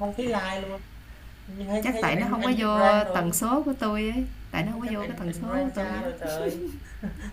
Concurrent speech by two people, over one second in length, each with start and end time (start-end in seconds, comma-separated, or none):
1.8-3.2, 4.7-6.1